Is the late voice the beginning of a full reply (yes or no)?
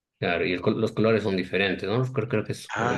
yes